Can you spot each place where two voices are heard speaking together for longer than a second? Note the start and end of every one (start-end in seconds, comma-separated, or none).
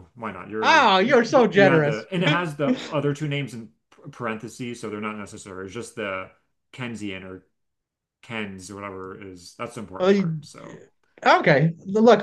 0.6-2.1